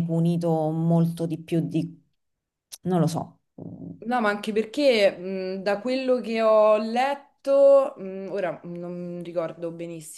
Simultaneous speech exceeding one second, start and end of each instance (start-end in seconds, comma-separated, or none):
none